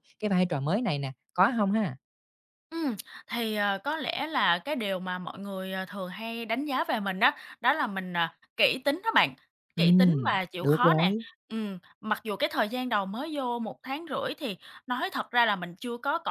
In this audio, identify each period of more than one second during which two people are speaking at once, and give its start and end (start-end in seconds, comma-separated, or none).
9.8-11.1